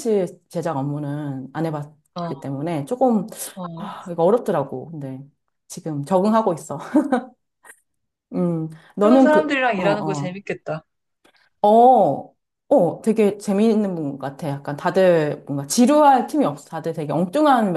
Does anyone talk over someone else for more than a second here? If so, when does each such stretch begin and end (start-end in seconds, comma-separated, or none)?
9.0-10.4